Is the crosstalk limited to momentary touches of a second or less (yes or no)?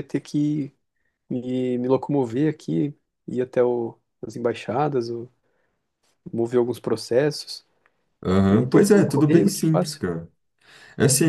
no